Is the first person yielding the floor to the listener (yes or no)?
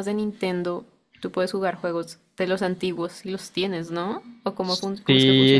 yes